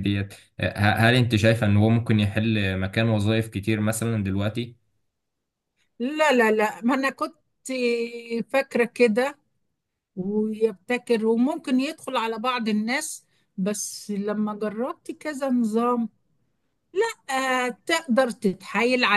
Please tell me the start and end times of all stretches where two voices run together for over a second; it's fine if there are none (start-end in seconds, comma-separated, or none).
none